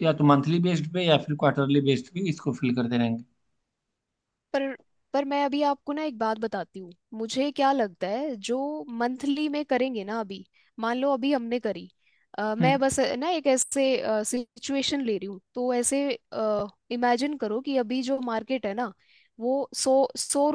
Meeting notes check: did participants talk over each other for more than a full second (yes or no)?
no